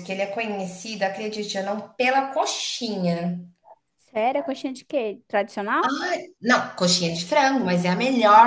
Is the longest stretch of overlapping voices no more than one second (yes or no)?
yes